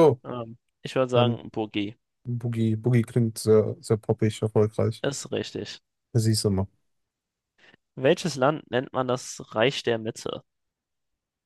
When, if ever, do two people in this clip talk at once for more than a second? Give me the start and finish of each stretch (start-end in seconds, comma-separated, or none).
none